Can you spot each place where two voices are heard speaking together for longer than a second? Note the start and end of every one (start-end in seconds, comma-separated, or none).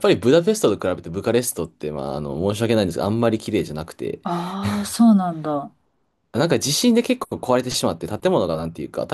none